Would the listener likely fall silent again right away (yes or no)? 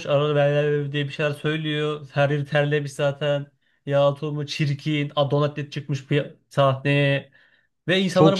no